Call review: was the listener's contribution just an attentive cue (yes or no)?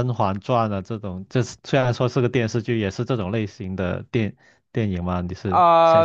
no